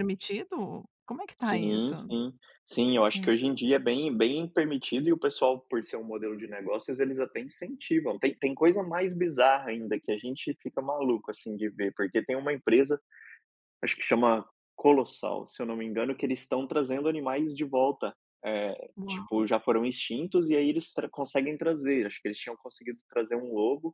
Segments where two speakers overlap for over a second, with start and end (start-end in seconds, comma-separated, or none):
none